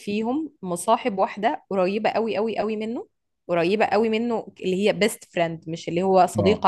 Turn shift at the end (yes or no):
no